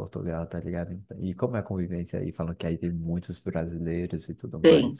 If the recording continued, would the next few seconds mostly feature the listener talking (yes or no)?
yes